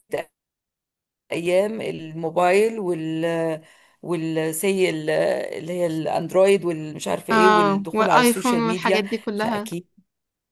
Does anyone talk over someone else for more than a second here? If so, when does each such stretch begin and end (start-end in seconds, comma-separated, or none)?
7.3-9.7